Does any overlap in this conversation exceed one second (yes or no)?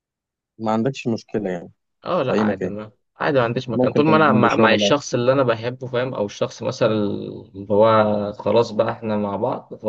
yes